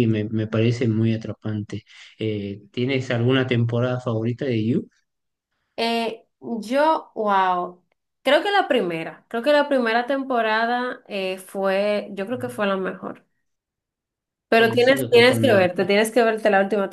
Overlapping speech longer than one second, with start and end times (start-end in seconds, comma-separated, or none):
14.6-15.9